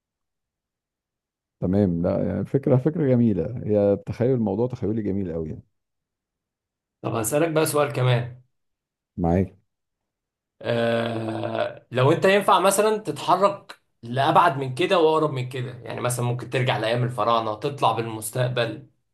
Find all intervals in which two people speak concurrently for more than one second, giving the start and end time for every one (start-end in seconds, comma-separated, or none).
none